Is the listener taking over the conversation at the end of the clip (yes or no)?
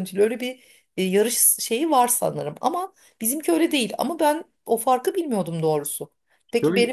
no